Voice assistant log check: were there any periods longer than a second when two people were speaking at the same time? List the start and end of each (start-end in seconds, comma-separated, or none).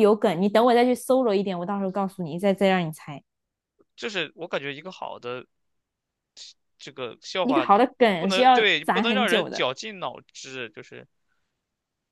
7.4-9.7